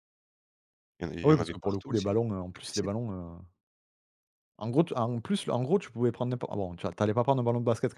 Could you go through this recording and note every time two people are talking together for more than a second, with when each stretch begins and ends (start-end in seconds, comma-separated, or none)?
1.2-2.9